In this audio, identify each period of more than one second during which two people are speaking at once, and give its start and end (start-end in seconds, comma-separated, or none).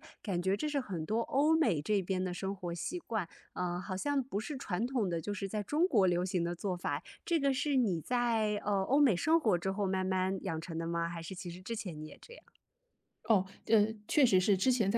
none